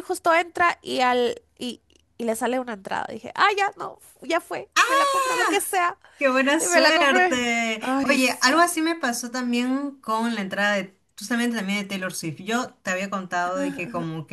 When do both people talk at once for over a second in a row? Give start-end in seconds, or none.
6.6-8.9